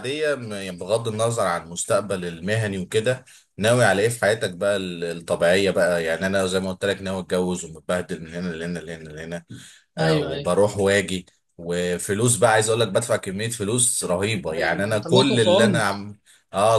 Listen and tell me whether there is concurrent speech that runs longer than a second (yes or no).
yes